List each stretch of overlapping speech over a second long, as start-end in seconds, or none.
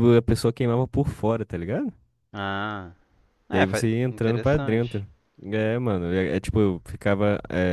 3.5-5.0